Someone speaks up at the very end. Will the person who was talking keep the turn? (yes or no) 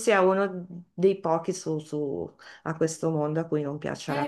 yes